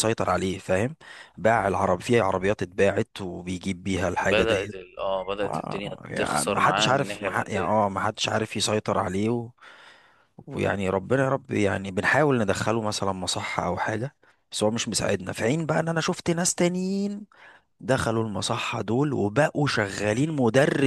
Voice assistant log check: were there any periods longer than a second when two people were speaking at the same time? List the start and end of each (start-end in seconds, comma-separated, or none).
5.4-7.7